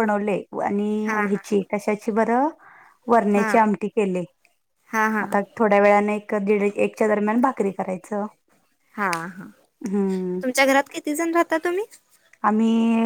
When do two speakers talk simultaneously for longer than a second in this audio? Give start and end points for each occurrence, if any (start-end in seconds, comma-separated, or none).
none